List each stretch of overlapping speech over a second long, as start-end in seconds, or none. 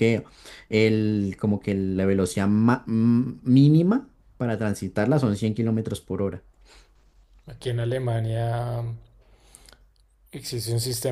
none